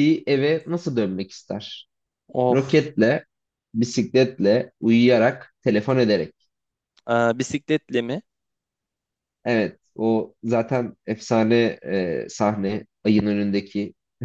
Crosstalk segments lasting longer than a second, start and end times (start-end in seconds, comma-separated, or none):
none